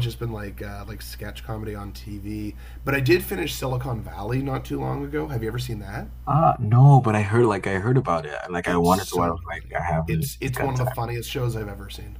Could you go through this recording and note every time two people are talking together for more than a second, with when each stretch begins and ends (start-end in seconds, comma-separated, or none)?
8.7-10.9